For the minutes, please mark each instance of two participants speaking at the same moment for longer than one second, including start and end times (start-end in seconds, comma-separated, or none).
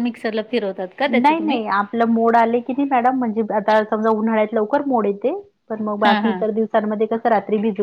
none